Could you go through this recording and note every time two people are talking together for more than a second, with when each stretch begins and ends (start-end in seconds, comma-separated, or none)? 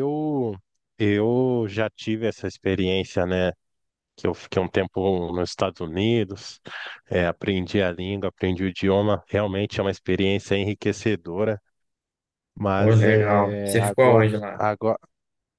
12.8-14.6